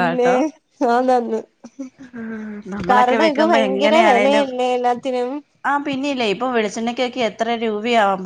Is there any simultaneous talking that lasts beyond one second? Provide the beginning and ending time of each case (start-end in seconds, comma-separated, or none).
2.9-4.5